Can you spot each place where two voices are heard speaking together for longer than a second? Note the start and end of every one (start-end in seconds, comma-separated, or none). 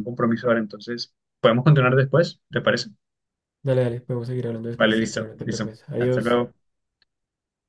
4.8-6.4